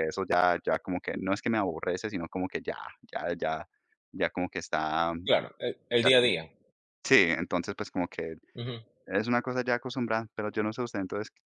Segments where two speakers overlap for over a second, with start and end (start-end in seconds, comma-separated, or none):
none